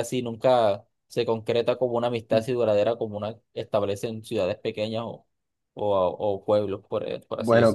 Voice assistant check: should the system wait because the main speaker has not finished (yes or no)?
no